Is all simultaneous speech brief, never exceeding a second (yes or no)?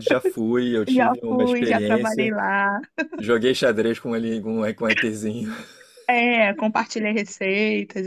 no